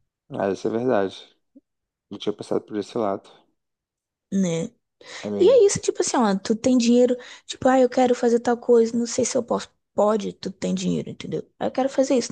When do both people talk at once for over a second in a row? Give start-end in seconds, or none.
none